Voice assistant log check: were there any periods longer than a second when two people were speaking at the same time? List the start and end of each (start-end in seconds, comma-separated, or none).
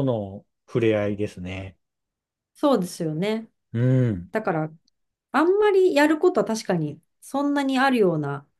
none